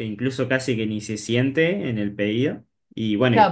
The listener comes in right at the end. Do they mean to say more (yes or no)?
yes